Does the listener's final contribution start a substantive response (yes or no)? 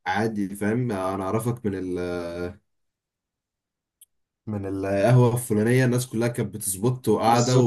no